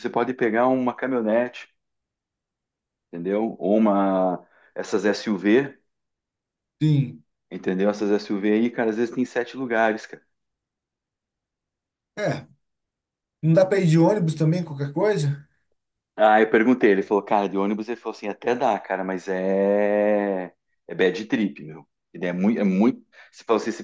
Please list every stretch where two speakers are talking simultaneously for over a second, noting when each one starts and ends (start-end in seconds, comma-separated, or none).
none